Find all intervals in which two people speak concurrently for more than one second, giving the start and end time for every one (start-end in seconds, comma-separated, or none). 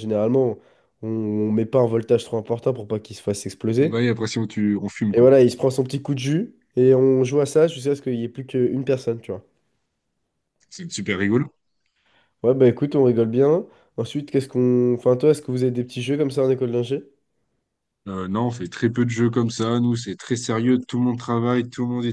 none